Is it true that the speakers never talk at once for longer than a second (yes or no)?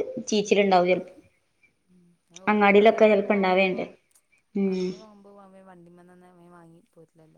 no